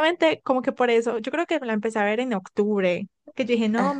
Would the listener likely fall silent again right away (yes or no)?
yes